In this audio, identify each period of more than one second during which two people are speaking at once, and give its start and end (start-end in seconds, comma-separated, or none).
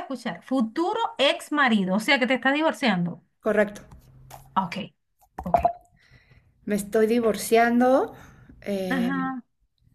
none